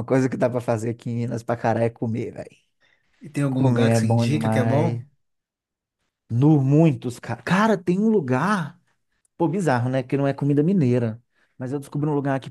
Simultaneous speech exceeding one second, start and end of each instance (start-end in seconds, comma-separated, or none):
3.5-5.0